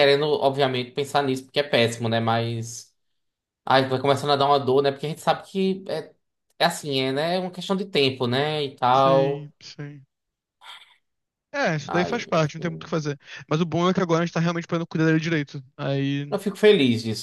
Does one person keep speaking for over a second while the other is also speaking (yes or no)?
no